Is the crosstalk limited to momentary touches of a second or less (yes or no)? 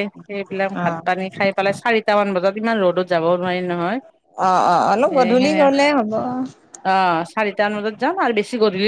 yes